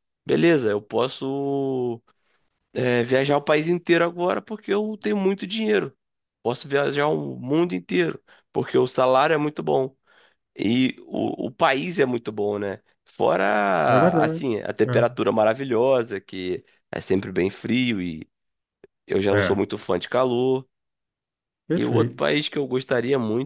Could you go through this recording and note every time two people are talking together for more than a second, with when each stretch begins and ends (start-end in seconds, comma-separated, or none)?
none